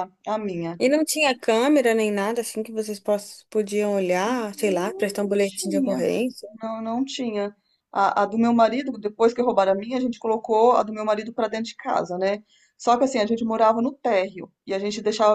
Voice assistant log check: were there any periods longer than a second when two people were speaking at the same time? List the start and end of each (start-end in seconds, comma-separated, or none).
4.2-6.0